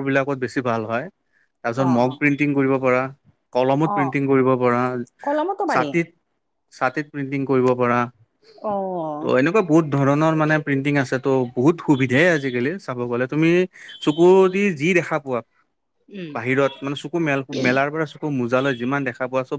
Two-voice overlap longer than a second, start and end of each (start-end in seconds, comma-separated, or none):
none